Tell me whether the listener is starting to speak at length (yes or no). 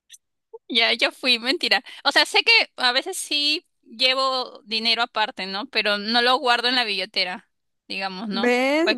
yes